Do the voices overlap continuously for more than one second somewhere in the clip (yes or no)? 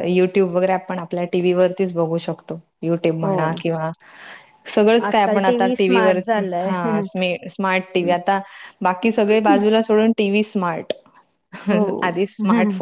yes